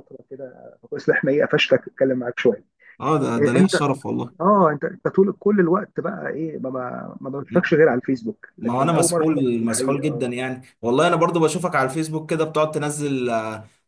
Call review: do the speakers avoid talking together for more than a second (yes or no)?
no